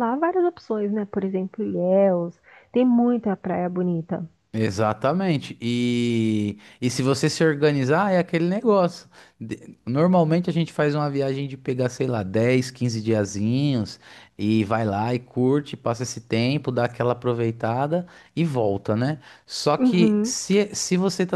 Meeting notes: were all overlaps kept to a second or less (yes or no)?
yes